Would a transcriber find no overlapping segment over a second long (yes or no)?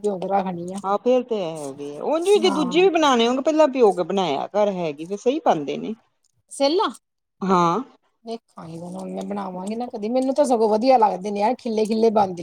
yes